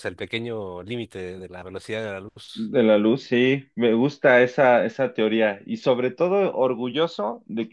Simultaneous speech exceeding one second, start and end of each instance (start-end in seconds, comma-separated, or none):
none